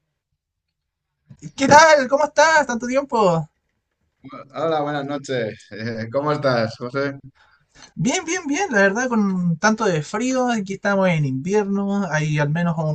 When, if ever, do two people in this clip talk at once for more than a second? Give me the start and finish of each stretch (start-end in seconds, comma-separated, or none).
none